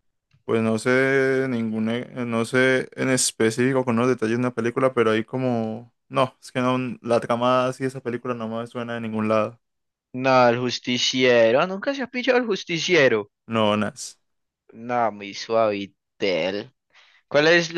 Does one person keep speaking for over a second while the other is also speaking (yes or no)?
no